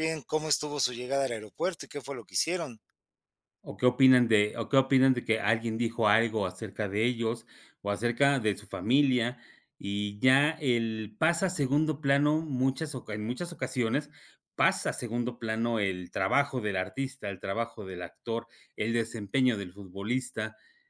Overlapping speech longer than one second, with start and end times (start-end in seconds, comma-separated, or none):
none